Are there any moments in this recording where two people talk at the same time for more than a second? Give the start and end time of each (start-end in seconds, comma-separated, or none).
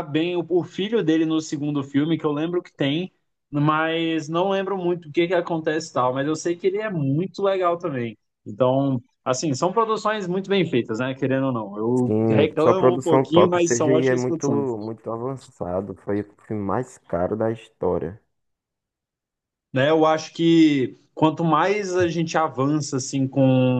12.0-14.7